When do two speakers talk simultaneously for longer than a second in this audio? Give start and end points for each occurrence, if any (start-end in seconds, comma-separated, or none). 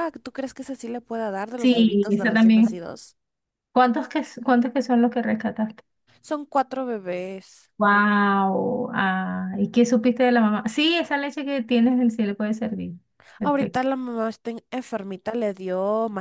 1.6-2.8